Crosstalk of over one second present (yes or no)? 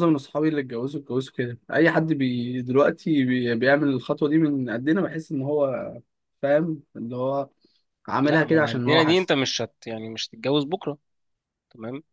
yes